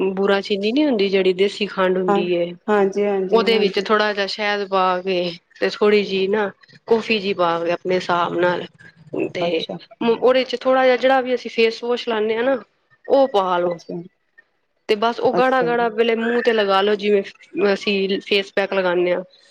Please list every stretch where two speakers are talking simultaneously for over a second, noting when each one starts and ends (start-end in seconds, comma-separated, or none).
none